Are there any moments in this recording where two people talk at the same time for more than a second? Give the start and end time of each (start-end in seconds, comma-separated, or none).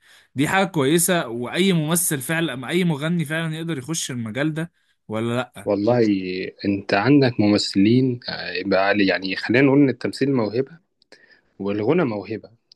none